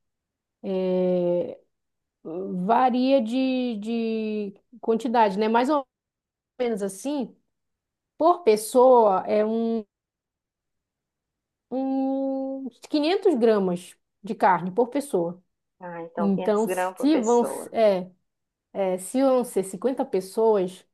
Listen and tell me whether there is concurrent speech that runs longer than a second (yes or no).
yes